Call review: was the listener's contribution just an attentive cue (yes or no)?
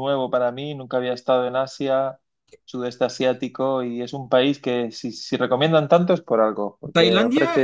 no